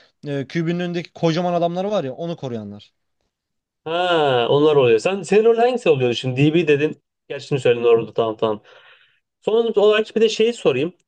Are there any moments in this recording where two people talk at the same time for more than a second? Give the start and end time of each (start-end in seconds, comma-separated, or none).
none